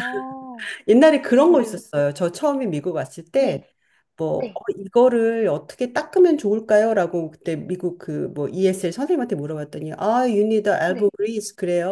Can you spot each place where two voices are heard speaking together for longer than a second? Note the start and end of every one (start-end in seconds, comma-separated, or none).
none